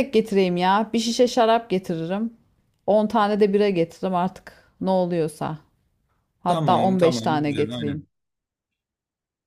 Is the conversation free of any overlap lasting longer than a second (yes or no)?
no